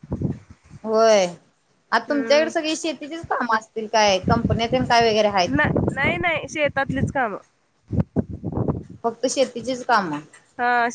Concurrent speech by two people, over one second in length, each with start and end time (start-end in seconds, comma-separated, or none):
none